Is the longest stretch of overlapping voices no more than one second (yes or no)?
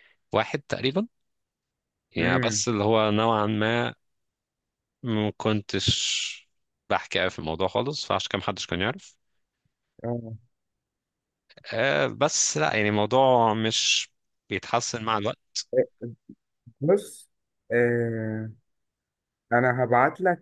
yes